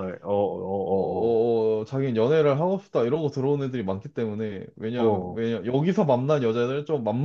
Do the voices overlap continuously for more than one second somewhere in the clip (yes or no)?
no